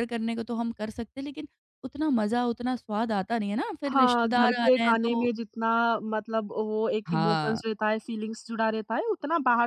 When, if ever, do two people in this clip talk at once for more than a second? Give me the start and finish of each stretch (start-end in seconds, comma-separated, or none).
3.9-5.3